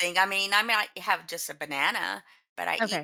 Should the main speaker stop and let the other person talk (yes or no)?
yes